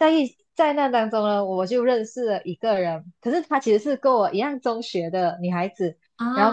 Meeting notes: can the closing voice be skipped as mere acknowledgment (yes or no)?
yes